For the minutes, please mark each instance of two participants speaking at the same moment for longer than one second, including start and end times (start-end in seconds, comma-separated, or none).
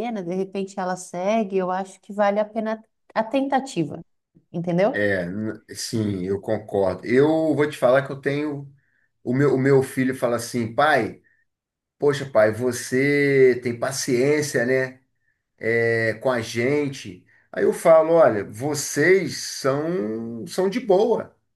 none